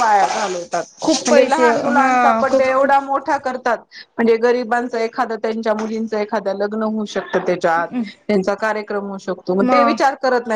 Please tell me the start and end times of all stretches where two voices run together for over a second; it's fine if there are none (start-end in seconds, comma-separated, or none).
1.2-2.8